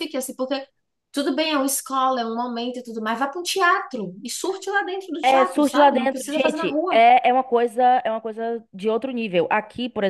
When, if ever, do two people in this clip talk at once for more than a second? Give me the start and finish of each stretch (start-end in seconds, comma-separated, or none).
5.2-7.0